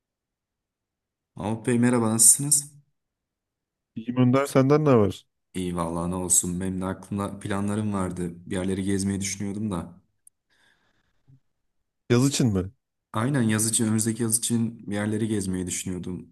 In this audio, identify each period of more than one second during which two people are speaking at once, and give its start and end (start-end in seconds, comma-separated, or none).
none